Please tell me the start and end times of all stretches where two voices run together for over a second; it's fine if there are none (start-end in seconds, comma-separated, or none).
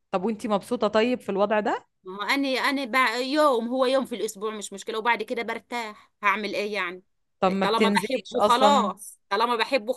7.6-8.9